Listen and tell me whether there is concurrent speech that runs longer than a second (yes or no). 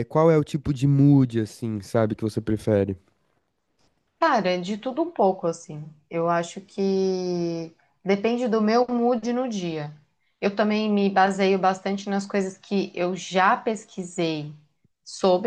no